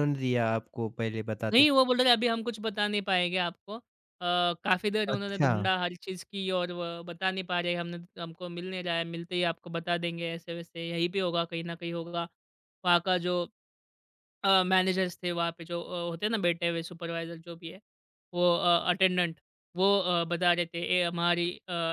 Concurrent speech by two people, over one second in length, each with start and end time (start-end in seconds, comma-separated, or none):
none